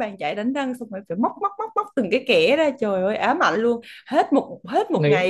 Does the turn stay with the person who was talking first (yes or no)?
yes